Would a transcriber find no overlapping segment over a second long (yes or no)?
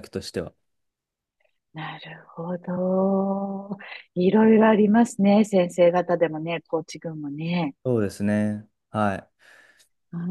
yes